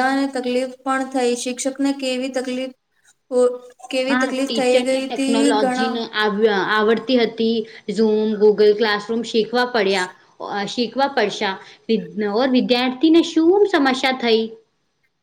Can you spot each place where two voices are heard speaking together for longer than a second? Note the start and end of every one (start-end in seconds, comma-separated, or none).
4.1-5.9